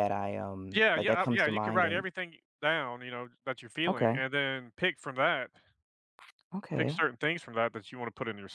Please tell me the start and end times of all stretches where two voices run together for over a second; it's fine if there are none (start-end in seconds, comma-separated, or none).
0.7-2.0